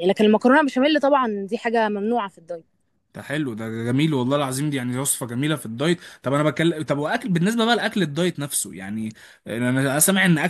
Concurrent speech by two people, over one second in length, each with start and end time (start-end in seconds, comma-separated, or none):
none